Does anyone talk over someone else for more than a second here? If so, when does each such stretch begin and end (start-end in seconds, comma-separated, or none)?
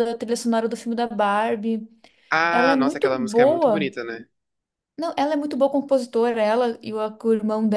2.5-3.9